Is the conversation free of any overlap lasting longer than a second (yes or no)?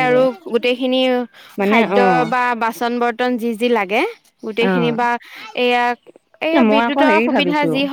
yes